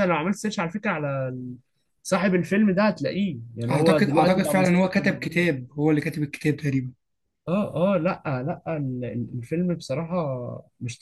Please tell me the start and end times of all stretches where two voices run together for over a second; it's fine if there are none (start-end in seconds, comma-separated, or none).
3.7-5.2